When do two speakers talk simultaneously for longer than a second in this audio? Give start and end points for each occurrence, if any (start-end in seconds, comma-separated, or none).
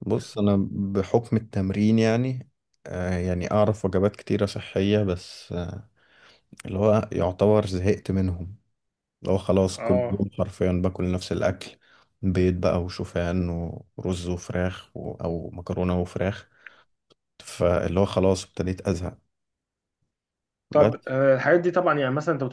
none